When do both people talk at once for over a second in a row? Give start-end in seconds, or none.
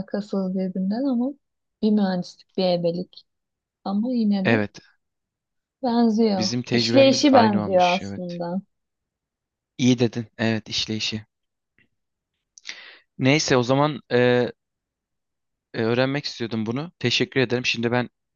6.4-8.4